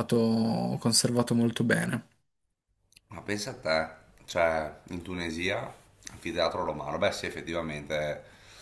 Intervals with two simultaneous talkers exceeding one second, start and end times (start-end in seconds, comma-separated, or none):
none